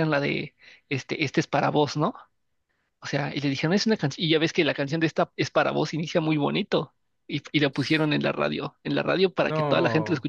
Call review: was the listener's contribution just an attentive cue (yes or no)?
yes